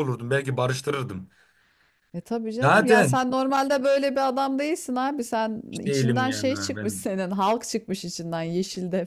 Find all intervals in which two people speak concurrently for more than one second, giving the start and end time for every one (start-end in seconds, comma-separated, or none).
5.7-7.1